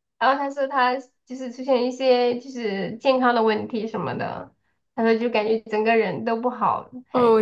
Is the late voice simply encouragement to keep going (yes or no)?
no